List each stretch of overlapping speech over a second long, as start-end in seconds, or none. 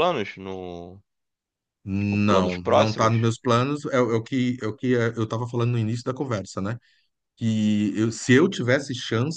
2.0-3.3